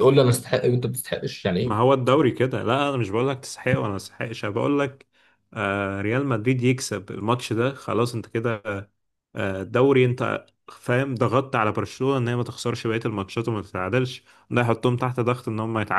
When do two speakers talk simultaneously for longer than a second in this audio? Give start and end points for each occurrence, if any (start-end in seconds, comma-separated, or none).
none